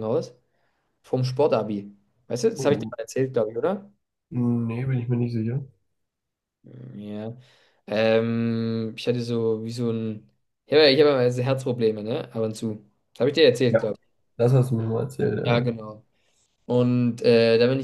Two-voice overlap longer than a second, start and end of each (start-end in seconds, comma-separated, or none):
none